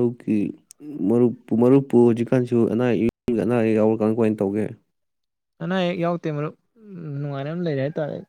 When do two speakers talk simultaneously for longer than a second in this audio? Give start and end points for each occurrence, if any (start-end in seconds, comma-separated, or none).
none